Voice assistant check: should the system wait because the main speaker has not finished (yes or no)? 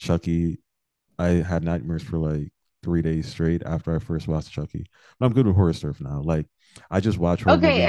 no